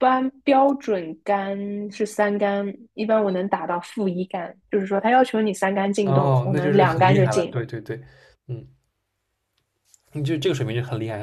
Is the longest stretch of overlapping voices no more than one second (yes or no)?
no